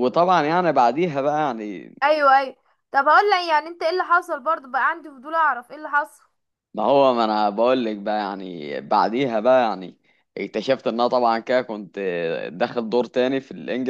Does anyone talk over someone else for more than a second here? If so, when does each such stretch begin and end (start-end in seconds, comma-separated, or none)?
none